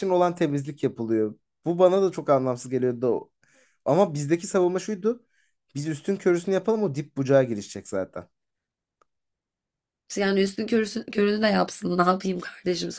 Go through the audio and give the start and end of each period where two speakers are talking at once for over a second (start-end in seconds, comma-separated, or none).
none